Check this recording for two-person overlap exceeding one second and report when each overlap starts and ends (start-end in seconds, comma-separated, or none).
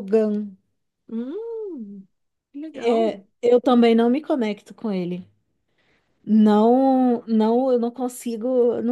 none